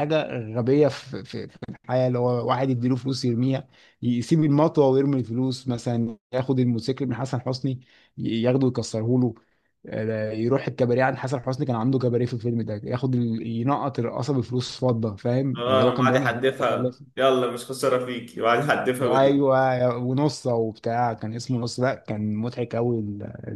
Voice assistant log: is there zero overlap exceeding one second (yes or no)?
no